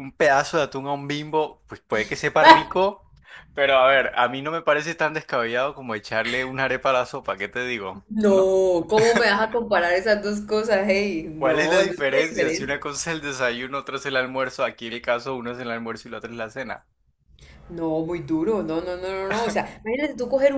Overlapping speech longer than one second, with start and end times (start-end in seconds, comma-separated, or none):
11.4-12.9